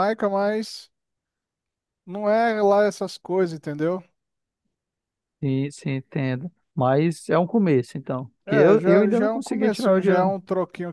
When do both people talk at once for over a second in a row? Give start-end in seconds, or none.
8.5-10.3